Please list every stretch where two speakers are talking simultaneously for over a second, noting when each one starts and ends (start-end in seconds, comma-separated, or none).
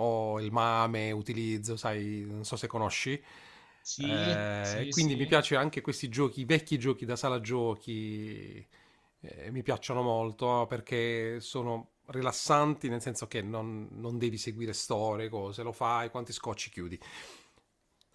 4.0-5.3